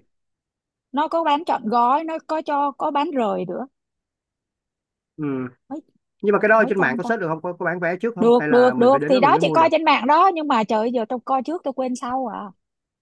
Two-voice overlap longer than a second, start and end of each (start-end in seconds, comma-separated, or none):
8.2-9.7